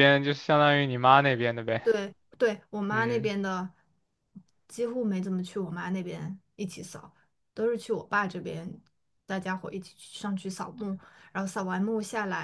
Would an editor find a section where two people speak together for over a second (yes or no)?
no